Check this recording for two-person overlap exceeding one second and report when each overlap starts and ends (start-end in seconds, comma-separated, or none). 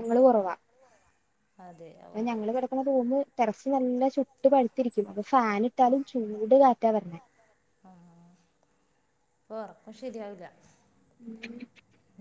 none